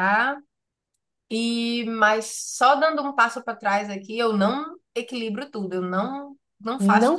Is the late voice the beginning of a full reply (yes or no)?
yes